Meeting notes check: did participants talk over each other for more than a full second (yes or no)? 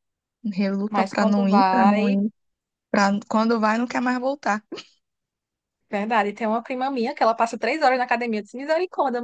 yes